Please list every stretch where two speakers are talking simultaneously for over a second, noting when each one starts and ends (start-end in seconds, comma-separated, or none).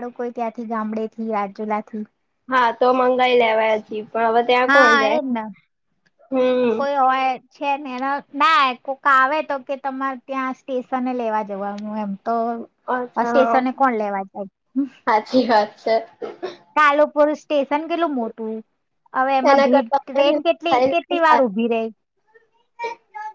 19.5-21.2